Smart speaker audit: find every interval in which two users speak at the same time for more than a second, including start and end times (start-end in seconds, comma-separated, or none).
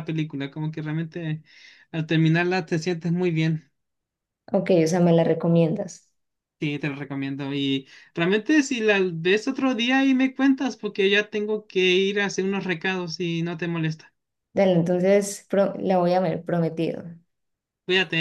none